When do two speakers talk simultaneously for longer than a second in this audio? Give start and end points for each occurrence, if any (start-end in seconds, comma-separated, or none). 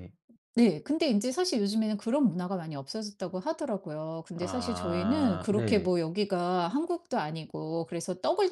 4.4-5.9